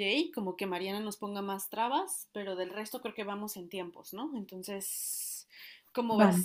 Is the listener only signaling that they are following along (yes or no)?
yes